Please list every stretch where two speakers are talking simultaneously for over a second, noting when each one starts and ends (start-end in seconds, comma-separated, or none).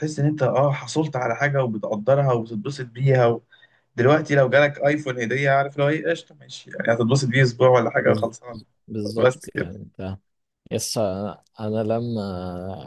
none